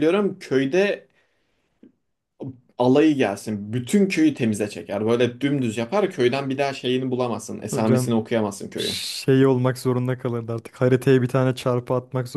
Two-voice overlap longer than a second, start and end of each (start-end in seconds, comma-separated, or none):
none